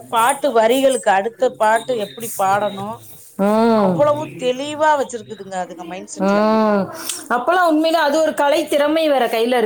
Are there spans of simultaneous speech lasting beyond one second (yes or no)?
no